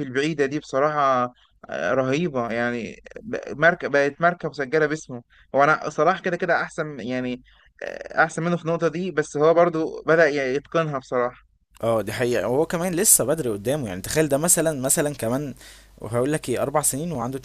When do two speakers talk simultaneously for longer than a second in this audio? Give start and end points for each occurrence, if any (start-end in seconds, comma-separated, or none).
none